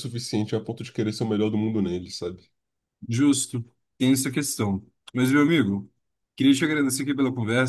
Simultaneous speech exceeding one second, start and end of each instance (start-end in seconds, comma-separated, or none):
none